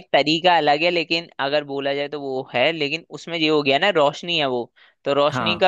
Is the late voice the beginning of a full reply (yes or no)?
no